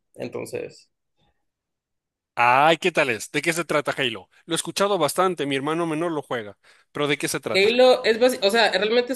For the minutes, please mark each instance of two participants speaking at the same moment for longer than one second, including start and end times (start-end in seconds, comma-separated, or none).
none